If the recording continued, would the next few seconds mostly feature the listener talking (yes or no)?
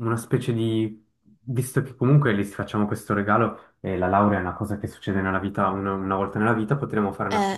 no